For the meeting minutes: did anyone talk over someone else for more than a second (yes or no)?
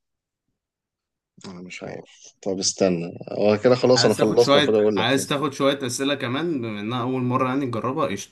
yes